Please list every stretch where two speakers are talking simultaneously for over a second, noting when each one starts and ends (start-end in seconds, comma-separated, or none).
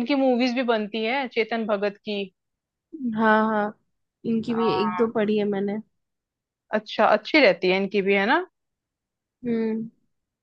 none